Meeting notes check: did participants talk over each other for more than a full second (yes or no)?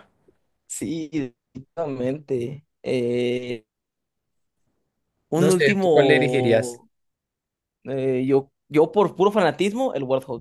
yes